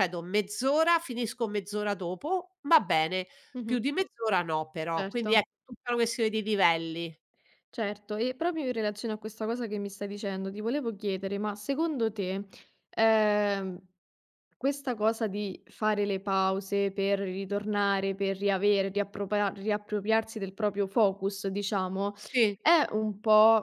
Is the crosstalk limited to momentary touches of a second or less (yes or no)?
yes